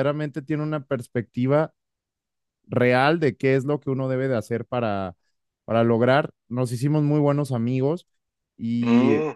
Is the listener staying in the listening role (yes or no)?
yes